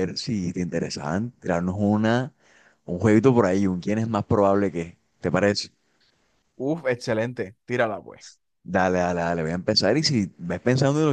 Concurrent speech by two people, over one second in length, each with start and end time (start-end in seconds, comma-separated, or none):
none